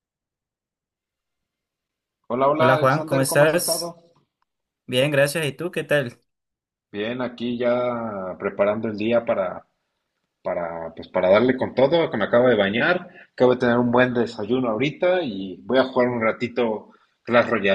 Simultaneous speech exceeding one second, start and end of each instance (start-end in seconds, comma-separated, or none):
2.6-4.0